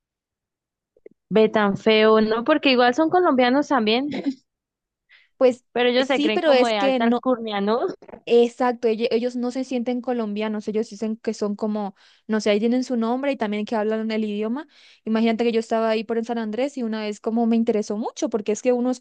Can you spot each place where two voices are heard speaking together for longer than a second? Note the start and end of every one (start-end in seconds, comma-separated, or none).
5.7-7.2